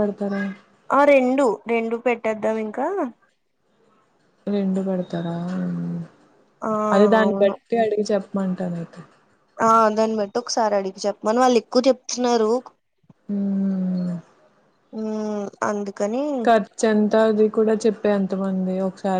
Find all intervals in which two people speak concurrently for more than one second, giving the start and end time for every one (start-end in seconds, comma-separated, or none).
none